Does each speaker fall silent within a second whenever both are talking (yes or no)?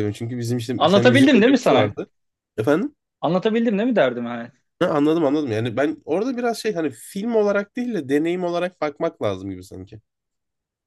no